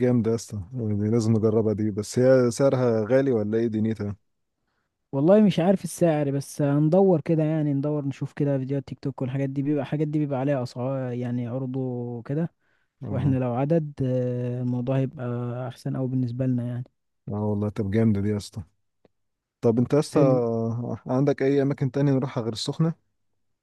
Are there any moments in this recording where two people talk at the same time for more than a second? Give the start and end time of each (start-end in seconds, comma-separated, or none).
none